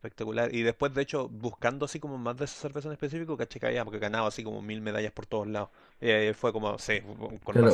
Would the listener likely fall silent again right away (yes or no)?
no